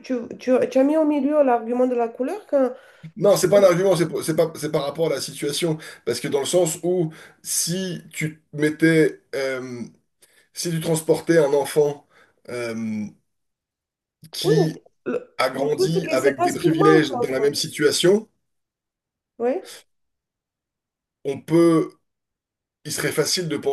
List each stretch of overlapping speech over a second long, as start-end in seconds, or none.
15.4-17.6